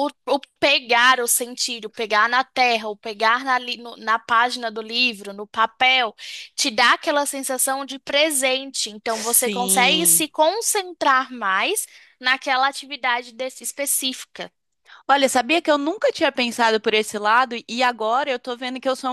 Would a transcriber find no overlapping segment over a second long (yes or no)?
no